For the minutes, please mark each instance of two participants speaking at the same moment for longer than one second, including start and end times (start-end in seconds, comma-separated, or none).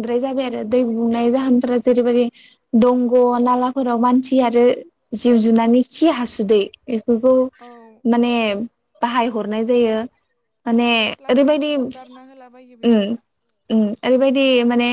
11.3-13.1